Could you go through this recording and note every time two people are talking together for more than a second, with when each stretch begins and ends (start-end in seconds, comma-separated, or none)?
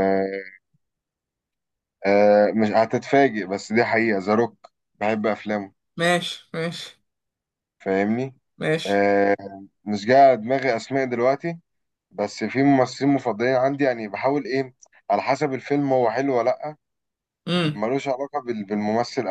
none